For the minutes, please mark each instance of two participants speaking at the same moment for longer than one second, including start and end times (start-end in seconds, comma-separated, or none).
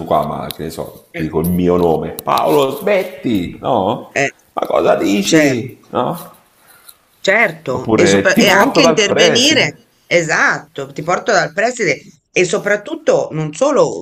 7.7-9.8